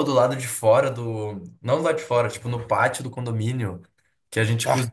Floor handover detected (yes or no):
no